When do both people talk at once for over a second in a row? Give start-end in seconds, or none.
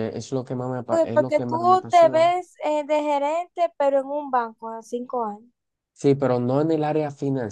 0.9-2.3